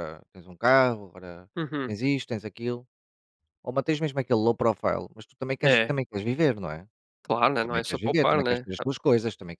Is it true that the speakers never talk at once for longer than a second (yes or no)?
no